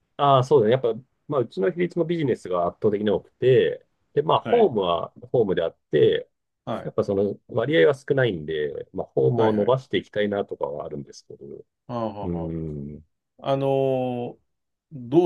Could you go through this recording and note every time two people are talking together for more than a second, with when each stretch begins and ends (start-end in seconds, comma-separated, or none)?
none